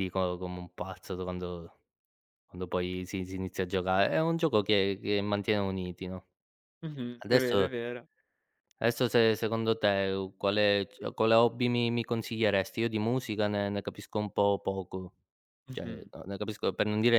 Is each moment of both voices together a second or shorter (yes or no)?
yes